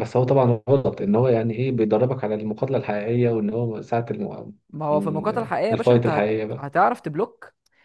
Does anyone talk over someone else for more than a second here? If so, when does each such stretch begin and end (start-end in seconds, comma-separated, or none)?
4.9-6.7